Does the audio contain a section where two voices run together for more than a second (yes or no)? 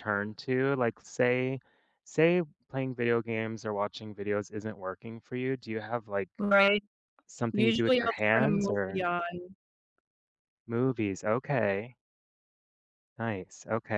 yes